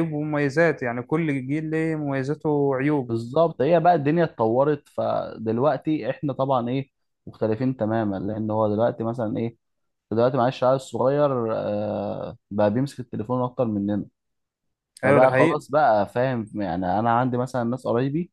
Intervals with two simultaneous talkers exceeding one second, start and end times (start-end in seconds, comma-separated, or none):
none